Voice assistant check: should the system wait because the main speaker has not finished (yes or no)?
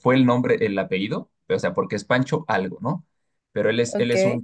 yes